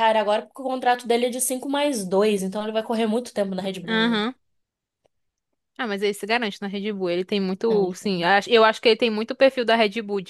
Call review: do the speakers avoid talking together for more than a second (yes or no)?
yes